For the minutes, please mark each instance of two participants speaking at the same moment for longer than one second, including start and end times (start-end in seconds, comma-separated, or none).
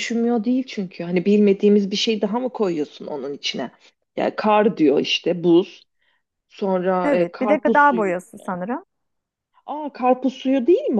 7.0-8.5